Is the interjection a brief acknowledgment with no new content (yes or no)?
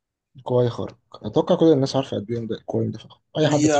no